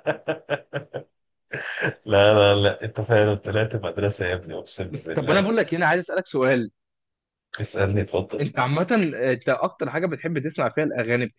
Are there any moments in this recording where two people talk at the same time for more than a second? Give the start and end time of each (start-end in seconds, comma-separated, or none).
none